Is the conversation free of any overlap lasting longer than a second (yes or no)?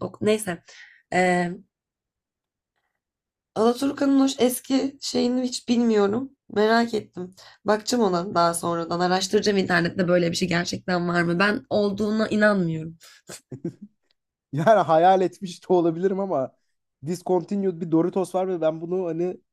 yes